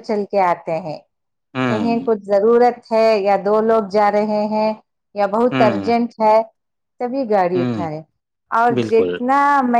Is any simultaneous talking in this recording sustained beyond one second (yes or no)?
no